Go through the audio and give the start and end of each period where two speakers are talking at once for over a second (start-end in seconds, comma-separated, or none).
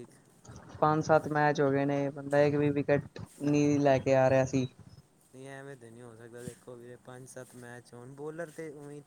none